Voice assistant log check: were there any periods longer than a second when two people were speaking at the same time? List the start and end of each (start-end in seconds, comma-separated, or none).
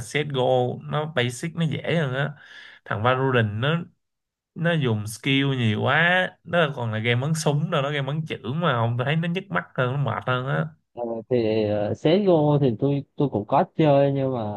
none